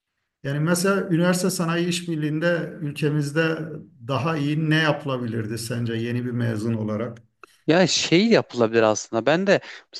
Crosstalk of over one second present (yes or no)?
no